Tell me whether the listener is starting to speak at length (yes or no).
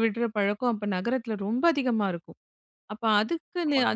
no